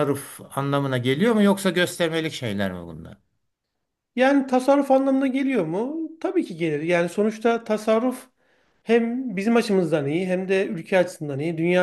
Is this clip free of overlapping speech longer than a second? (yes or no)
yes